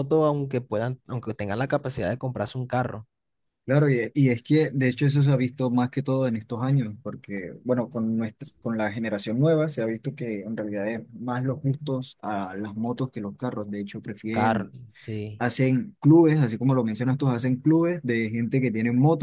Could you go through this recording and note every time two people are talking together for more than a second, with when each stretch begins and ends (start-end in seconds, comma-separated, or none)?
none